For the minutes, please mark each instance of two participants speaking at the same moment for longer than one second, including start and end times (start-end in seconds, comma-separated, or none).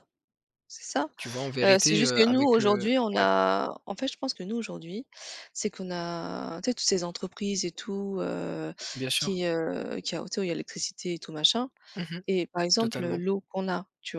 1.6-3.2